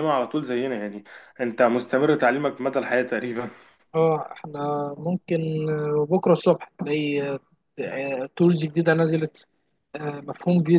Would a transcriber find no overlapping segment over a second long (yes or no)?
yes